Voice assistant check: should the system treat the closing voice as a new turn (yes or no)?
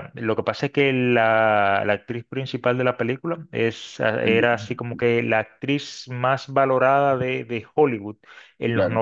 no